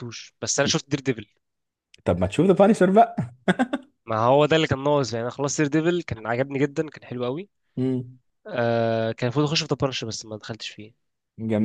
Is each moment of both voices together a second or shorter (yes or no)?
yes